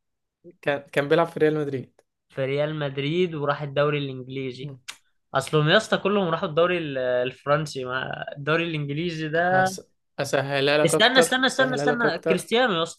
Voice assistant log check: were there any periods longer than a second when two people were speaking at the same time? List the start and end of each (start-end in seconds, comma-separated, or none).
10.8-12.5